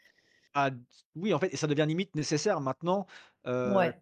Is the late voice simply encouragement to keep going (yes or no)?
yes